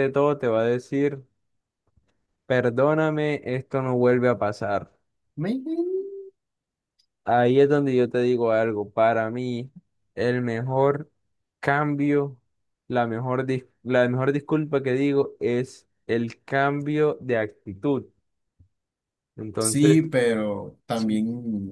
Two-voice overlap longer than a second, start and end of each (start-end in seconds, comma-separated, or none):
none